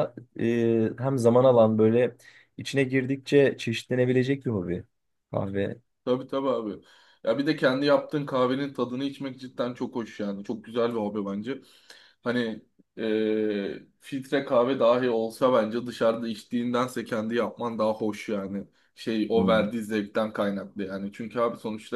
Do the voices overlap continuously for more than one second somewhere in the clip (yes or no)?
no